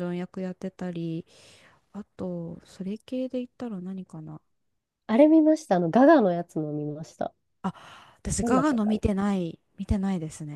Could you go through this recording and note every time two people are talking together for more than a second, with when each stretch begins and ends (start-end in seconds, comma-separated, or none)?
none